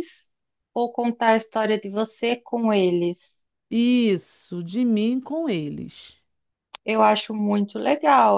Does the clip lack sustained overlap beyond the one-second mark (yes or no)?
yes